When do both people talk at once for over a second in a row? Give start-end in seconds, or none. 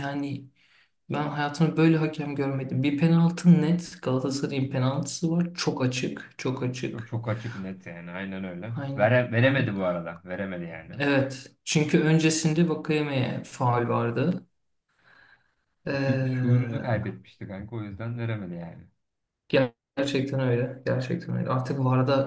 15.9-17.1